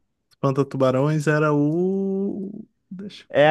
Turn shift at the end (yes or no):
yes